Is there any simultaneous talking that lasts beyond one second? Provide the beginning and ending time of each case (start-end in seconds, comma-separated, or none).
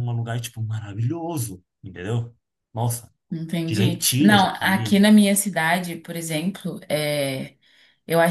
3.6-5.0